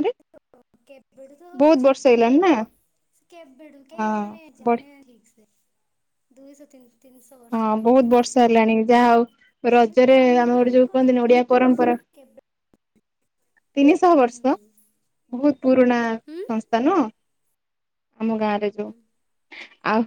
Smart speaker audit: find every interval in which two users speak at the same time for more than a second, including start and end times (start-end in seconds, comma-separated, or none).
9.9-12.0